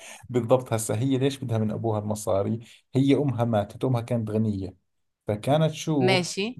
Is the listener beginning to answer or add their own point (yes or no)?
no